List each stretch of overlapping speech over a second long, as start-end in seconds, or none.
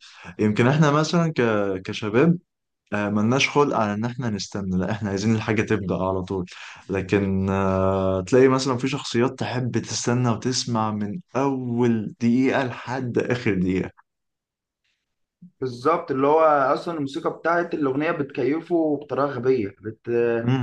none